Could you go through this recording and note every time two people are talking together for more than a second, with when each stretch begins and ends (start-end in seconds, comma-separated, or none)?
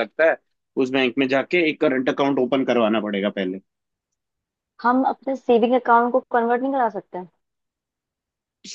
none